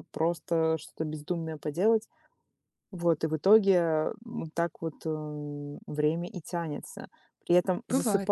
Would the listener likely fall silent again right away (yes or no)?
yes